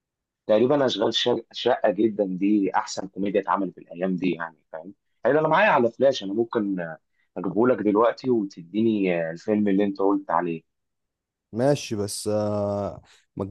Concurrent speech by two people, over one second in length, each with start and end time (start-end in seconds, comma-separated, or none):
none